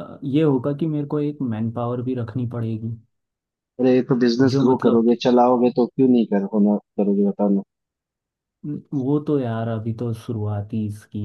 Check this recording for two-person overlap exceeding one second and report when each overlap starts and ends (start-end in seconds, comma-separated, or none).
none